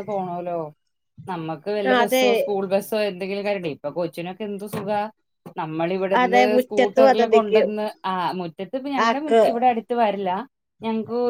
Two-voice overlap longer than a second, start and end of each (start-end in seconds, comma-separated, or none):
6.2-7.7